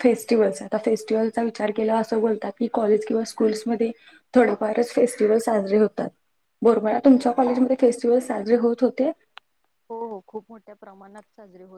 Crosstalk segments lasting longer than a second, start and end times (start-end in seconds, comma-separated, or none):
none